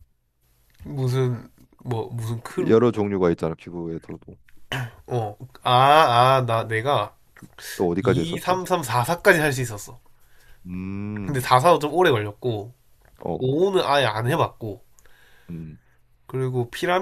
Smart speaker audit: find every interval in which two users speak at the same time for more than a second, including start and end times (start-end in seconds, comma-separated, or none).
none